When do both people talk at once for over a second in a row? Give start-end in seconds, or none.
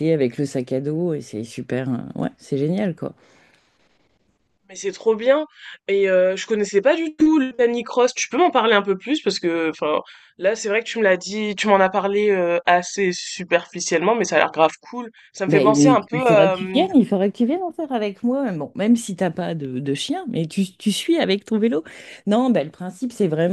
15.5-16.9